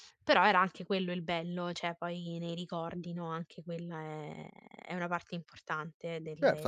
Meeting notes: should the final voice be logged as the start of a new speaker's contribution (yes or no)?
yes